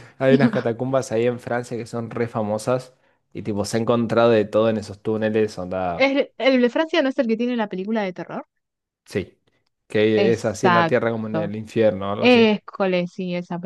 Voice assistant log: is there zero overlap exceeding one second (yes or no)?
no